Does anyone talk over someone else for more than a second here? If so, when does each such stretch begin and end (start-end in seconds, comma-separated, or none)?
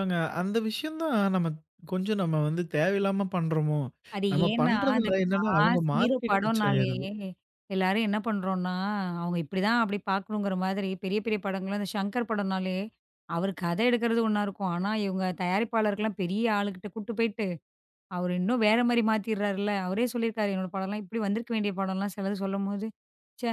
4.3-6.9